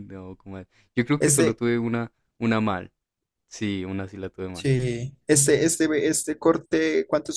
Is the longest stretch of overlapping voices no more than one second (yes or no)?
yes